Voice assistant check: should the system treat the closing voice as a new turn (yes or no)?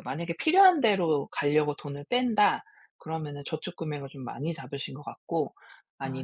no